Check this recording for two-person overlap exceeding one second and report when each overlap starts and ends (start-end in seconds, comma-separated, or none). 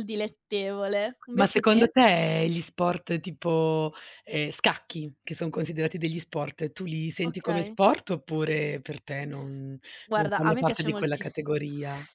10.1-11.4